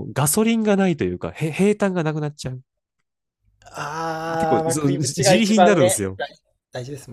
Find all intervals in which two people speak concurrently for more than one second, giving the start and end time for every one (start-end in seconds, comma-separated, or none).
4.4-6.2